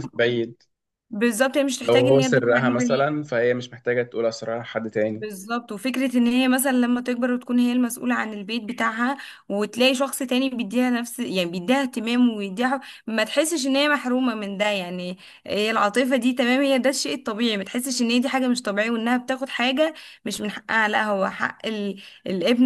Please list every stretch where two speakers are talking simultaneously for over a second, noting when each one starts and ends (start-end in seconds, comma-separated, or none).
1.8-3.1